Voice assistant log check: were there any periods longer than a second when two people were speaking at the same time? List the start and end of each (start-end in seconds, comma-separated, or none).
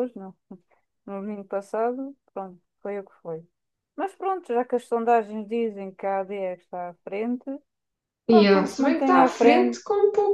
8.3-9.8